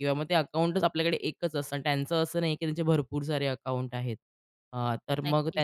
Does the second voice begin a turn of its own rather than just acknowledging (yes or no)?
no